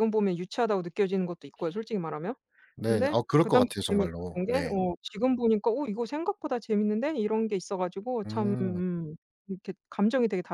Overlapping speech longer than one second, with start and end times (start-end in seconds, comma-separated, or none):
2.9-4.7